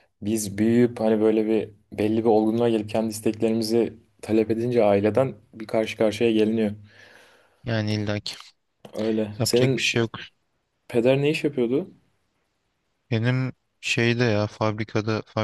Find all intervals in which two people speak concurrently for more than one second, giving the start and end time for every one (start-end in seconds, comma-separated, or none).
none